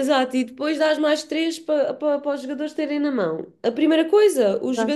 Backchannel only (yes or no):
yes